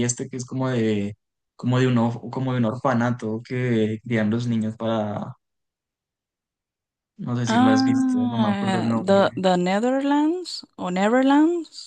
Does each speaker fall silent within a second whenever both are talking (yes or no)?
no